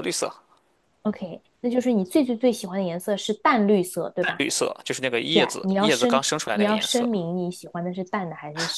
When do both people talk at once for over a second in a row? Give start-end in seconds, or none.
5.3-7.1